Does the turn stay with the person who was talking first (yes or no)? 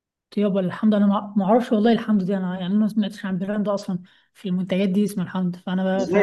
no